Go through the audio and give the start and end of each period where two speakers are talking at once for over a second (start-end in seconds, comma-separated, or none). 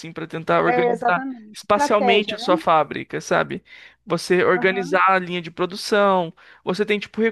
0.7-2.5